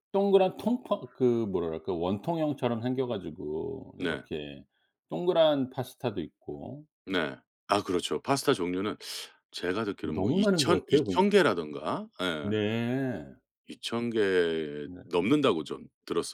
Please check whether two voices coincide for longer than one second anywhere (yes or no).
yes